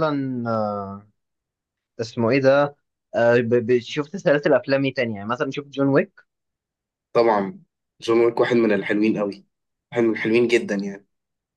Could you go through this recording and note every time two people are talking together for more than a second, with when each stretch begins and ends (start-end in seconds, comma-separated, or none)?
none